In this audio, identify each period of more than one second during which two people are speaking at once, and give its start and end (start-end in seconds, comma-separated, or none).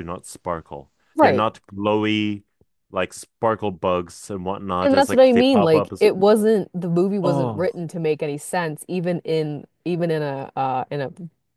4.8-6.0